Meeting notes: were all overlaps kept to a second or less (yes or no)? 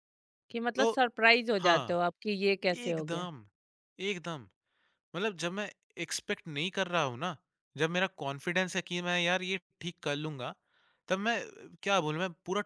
yes